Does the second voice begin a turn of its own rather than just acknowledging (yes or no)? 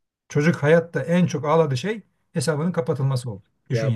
yes